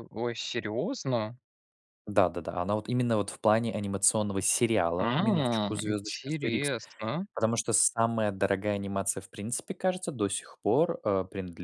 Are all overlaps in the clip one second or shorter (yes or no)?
no